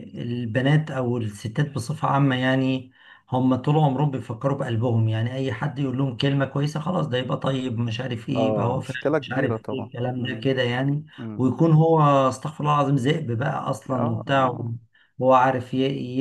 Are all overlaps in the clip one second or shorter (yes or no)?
no